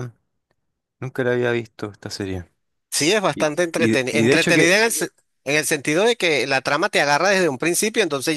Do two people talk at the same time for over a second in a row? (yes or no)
yes